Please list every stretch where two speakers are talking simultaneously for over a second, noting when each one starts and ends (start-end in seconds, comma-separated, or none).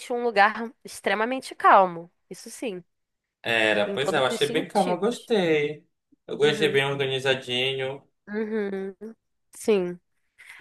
3.9-5.3